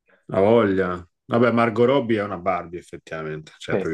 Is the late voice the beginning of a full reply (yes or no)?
no